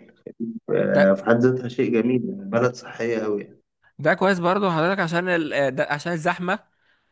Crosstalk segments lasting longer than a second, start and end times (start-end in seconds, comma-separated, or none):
none